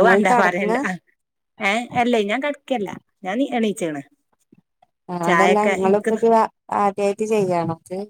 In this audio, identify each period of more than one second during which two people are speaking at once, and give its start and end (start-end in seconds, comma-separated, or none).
none